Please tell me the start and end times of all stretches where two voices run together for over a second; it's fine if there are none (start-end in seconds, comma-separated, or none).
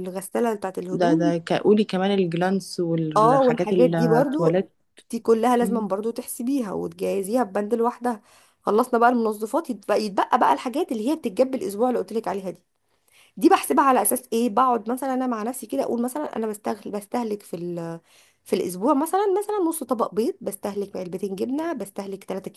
3.2-4.6